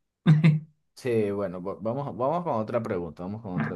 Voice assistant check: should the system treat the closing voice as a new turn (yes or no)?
yes